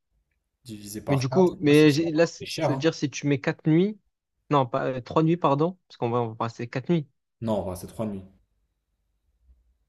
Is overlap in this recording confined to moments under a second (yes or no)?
no